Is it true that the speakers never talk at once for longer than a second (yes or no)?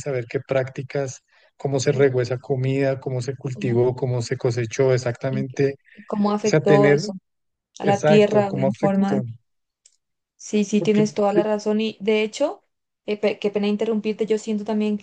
no